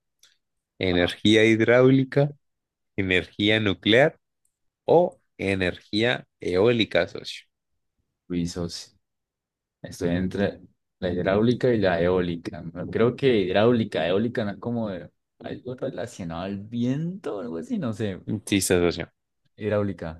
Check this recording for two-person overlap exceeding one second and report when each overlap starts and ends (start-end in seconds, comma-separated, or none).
none